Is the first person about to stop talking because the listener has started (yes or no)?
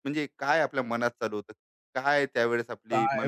yes